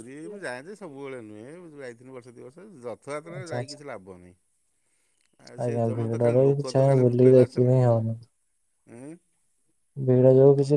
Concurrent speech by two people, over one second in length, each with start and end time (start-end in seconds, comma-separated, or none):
5.6-7.8